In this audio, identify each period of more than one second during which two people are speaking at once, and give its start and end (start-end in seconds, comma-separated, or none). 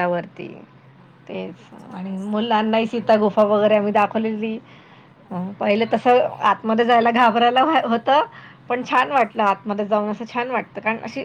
1.3-3.0